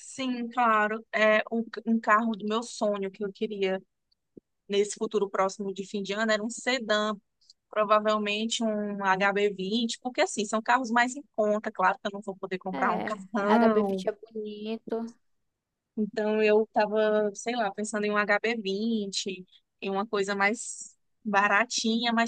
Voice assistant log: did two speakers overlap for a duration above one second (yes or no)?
yes